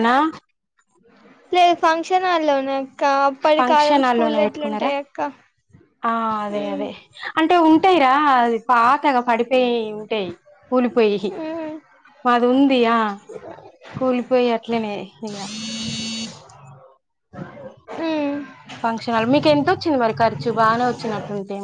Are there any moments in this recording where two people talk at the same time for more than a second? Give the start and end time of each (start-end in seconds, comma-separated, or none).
3.6-4.9